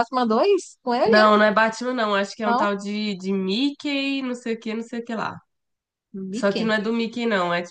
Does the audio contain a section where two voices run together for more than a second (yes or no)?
no